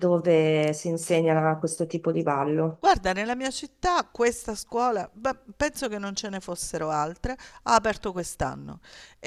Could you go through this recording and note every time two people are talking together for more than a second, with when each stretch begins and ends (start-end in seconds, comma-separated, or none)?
none